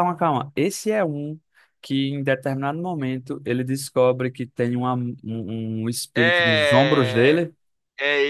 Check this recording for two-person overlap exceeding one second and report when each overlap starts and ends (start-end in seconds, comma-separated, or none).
6.1-7.4